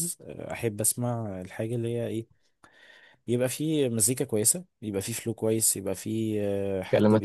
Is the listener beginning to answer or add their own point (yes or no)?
no